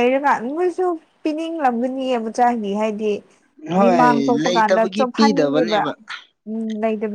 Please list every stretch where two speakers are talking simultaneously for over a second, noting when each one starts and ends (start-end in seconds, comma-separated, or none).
3.8-5.8